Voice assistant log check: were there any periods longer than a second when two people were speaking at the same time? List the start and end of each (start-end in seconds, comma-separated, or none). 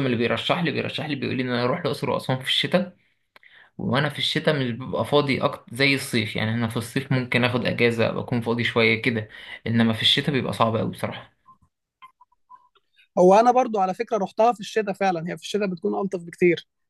none